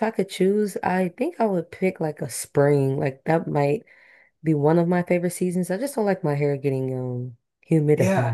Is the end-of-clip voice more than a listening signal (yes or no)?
yes